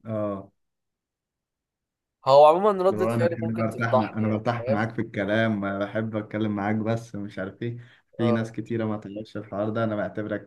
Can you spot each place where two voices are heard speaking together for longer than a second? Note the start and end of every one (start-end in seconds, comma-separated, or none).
2.9-4.8